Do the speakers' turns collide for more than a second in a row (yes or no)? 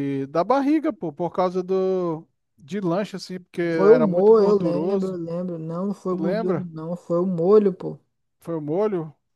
yes